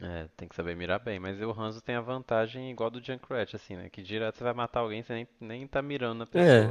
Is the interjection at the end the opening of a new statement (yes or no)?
yes